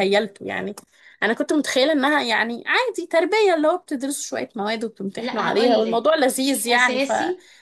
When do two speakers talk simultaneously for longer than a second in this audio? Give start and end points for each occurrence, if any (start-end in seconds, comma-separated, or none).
5.2-7.1